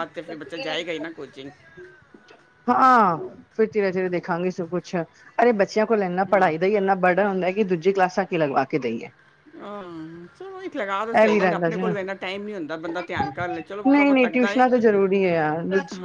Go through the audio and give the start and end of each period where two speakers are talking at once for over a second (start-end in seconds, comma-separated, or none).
none